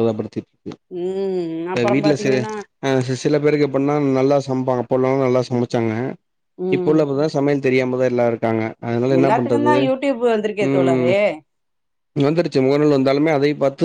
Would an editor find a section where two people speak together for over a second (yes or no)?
no